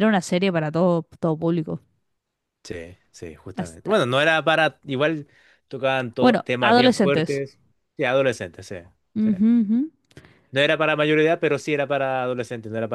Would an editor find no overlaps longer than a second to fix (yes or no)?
no